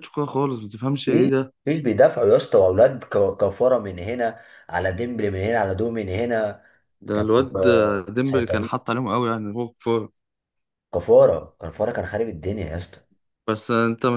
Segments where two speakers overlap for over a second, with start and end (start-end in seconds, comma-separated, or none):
7.1-8.7